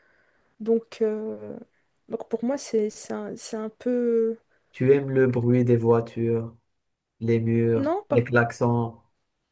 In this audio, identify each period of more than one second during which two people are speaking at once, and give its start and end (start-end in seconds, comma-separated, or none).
none